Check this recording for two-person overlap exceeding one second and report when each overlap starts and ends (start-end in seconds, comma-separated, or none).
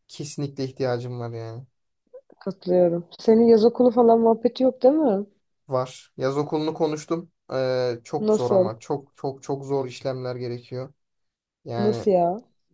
none